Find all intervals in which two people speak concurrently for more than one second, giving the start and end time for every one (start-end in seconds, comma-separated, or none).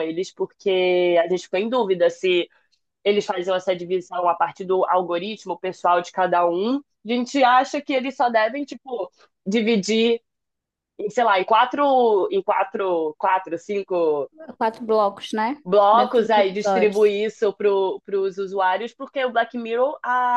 15.6-17.2